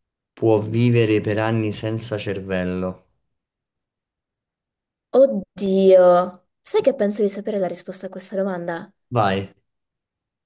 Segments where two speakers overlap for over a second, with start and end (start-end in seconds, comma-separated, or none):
none